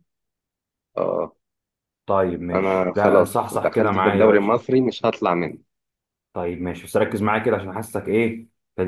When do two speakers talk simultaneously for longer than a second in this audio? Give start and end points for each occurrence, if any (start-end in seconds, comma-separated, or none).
2.5-4.6